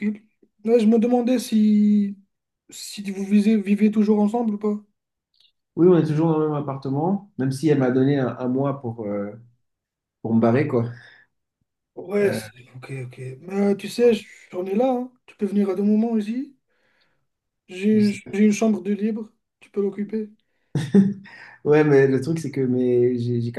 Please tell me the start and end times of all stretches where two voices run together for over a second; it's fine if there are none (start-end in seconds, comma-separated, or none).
none